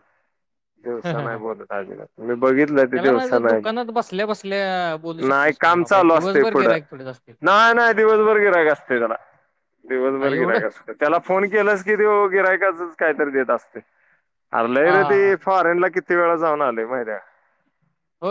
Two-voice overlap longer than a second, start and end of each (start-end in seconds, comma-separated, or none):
5.3-6.8